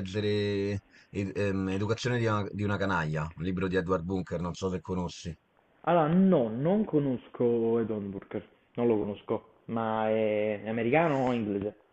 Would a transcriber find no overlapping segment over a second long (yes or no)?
yes